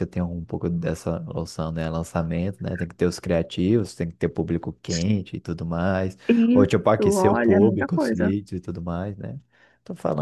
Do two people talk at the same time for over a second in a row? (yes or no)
yes